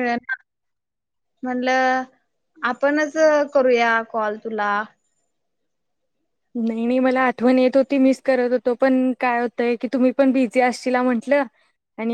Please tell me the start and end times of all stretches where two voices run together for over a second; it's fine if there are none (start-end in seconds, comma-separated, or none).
none